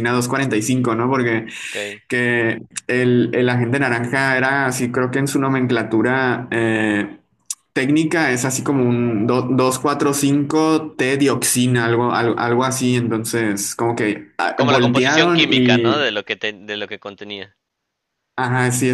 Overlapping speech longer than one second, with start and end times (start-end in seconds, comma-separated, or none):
14.6-16.1